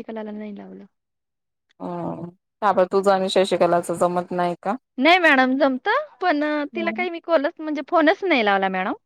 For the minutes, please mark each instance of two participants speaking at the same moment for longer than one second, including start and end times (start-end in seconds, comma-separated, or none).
none